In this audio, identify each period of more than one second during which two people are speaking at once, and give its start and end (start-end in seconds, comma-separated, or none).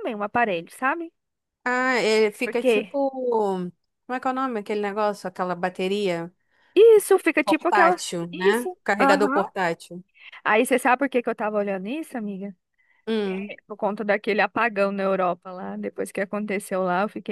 7.4-9.4